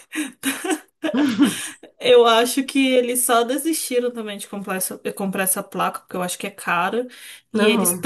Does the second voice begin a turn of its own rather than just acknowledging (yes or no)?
no